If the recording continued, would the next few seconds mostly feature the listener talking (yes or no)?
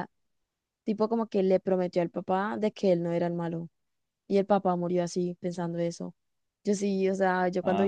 no